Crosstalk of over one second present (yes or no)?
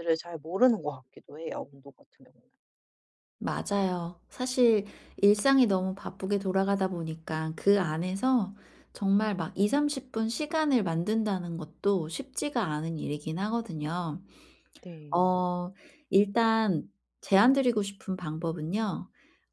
no